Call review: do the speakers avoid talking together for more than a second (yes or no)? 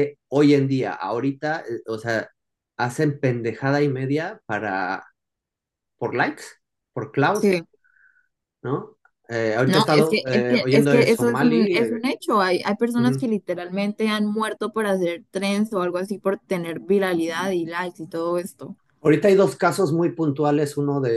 no